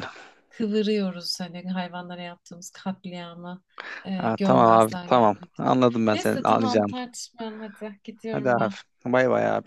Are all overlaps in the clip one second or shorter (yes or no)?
no